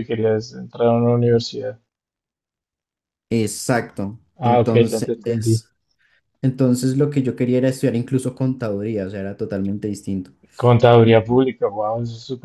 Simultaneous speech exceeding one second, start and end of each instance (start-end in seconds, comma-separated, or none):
4.4-5.6